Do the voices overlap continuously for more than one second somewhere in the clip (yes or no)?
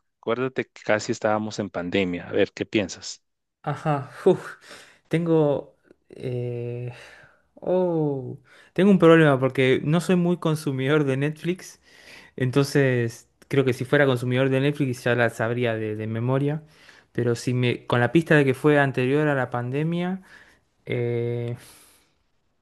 no